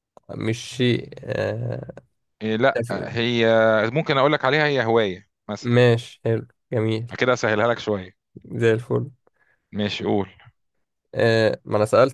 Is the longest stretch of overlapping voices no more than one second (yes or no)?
yes